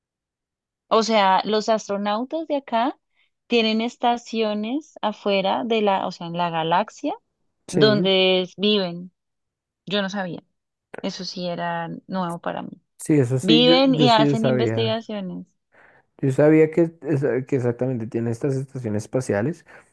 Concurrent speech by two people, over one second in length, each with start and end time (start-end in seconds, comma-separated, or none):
13.4-15.0